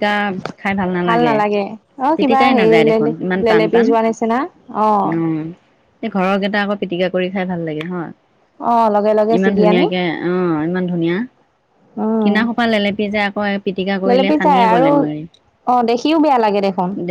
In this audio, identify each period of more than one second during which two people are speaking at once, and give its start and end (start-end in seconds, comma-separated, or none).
none